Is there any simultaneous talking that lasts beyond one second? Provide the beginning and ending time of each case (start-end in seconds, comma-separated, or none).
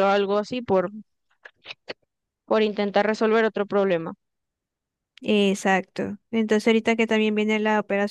none